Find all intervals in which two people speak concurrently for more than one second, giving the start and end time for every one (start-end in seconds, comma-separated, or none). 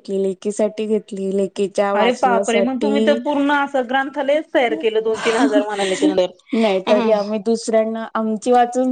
2.0-3.2